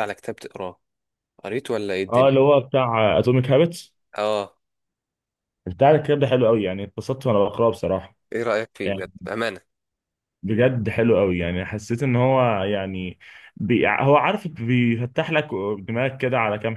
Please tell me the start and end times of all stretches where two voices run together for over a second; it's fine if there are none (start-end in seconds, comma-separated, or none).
none